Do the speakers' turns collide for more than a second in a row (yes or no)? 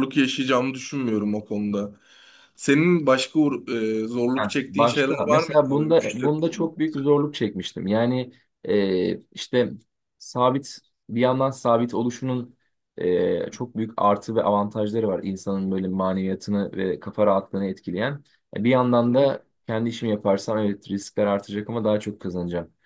yes